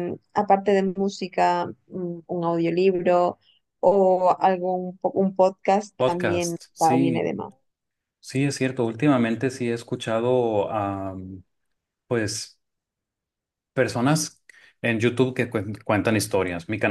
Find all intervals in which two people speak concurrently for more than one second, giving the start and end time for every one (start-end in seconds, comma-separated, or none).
6.0-7.3